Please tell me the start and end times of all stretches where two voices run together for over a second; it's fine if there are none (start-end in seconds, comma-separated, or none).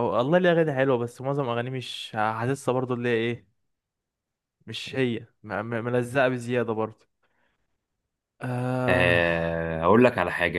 none